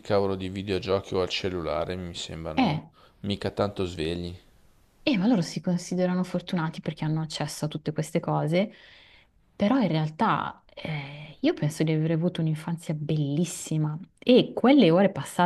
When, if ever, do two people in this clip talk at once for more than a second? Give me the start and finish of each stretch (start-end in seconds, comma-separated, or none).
none